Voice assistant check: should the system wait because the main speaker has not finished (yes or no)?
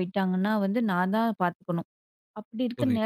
yes